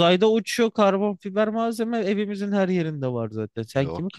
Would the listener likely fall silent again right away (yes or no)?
no